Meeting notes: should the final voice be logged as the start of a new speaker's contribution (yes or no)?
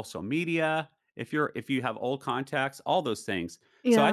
no